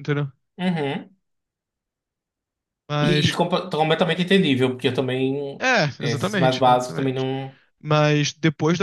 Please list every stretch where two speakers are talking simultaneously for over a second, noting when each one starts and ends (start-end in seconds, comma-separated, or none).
5.6-7.3